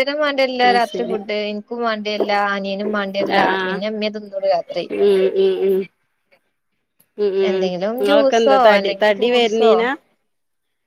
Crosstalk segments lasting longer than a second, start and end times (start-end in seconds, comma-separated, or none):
7.5-9.7